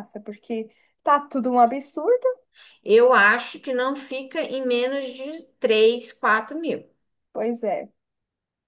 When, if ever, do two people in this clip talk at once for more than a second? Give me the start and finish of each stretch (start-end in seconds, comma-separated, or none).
none